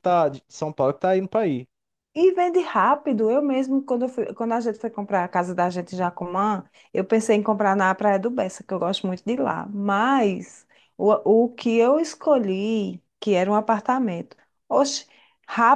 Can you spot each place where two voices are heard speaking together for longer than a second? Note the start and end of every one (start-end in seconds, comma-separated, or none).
none